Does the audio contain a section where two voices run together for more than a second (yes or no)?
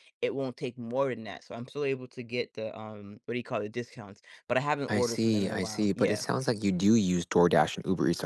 yes